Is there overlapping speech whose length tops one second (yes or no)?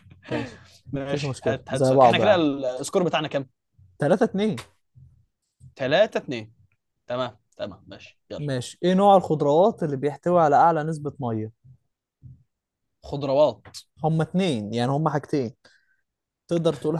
yes